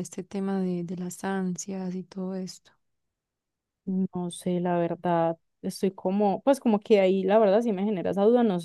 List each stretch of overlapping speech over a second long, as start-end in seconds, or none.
none